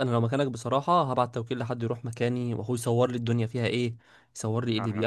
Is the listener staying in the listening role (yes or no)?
yes